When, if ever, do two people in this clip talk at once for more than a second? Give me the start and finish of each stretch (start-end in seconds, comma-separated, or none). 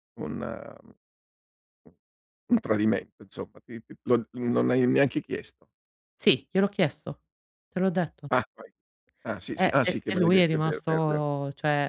9.6-11.2